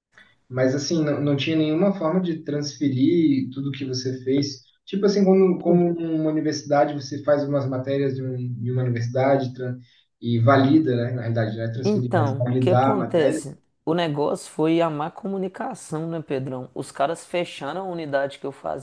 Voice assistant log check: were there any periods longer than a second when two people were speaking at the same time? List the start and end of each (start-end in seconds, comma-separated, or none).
11.8-13.4